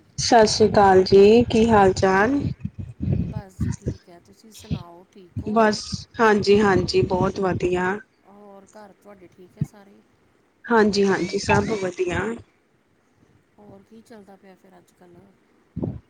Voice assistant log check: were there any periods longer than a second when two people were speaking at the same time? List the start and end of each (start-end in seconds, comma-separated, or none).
none